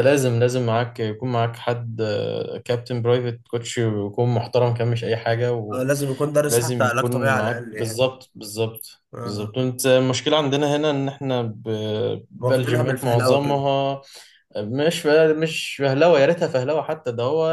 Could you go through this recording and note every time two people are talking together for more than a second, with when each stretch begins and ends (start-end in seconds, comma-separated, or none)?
6.5-8.0, 12.4-13.7